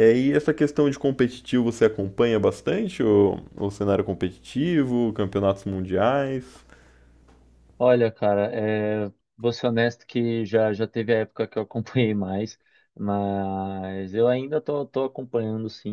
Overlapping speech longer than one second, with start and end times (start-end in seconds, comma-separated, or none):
none